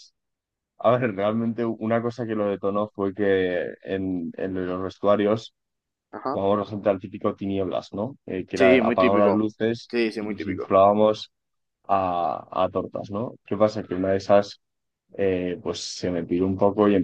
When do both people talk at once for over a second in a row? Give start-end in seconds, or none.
8.6-10.8